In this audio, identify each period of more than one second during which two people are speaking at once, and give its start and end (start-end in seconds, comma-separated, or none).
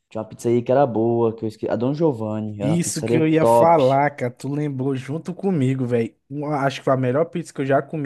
2.6-3.8